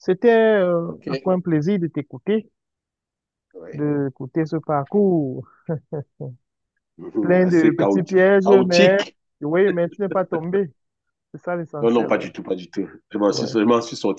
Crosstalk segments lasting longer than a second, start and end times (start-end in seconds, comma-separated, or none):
7.2-9.0